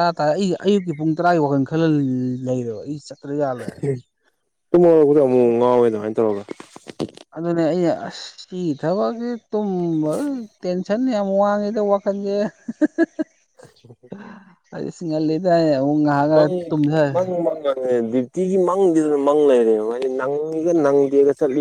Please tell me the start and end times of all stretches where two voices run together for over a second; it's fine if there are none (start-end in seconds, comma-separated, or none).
none